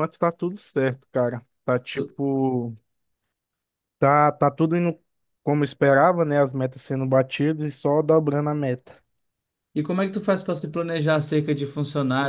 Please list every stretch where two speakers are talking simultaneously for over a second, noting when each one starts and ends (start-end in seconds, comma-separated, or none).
none